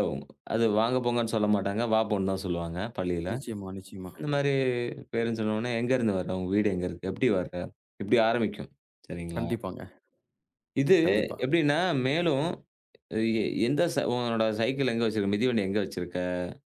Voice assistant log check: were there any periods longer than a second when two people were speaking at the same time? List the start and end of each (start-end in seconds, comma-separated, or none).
none